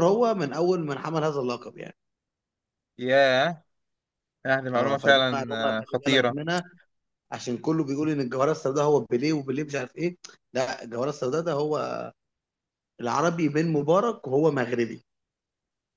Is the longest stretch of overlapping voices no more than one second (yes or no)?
no